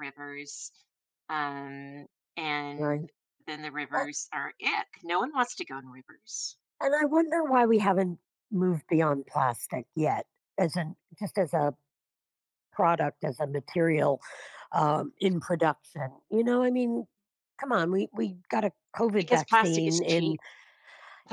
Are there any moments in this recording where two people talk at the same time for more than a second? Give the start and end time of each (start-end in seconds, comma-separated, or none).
19.2-20.4